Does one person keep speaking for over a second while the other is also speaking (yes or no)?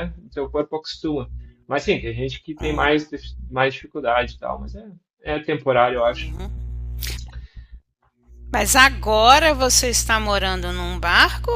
no